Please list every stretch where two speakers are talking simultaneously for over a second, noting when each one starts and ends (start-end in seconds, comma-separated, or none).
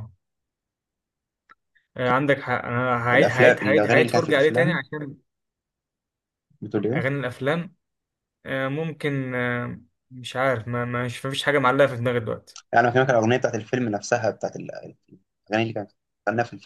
3.1-4.8